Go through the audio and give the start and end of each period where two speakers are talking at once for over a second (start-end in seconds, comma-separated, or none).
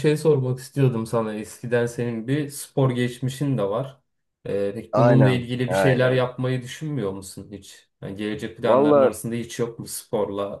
4.9-6.3